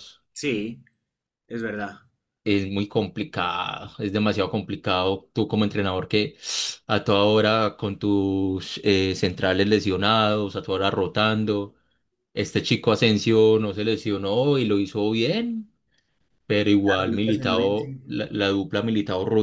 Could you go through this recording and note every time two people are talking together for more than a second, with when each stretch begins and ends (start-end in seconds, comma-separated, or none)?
16.8-18.0